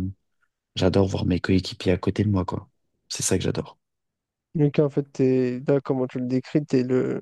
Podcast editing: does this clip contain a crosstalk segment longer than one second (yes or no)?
no